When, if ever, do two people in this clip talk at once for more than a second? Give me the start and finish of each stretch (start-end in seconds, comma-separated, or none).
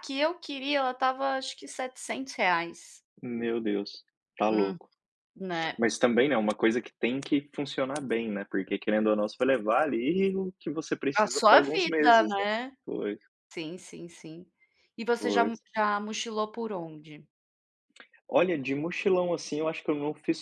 11.2-12.5